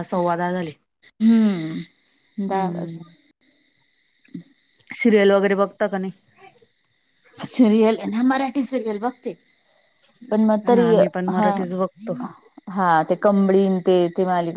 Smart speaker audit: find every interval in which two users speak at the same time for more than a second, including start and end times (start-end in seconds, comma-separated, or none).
none